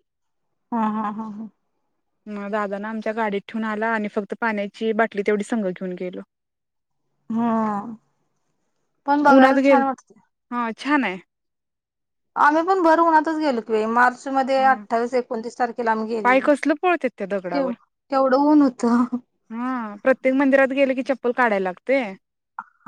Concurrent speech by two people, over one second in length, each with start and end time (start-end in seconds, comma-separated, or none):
none